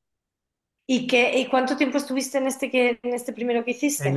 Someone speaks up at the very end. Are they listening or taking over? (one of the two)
taking over